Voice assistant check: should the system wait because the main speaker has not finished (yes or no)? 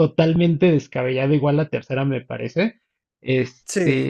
yes